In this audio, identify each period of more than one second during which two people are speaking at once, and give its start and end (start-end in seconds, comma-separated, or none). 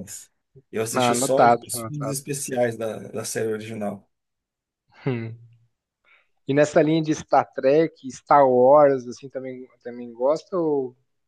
0.9-2.2